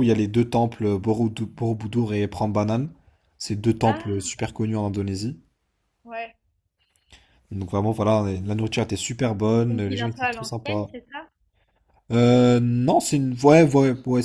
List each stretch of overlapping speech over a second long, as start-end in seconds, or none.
9.7-10.9